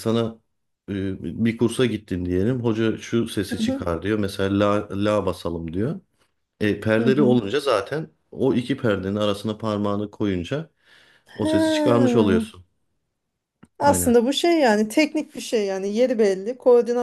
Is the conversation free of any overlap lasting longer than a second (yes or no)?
yes